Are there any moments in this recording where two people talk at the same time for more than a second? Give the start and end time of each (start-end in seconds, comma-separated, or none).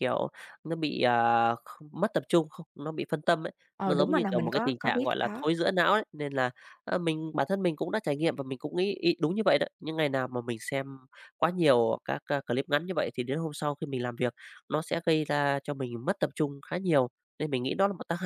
3.8-5.4